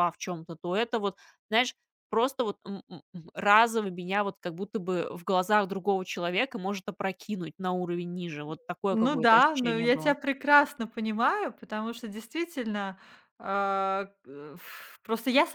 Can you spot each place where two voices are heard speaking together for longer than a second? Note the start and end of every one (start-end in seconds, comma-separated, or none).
8.9-10.2